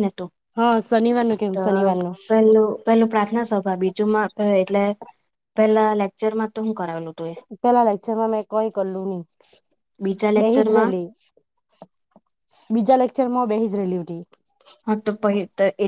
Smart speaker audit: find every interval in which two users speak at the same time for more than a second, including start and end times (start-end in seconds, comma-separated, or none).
none